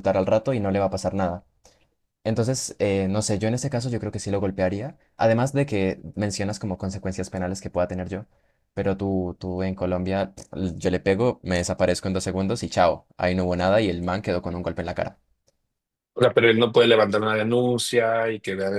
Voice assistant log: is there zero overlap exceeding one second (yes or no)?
yes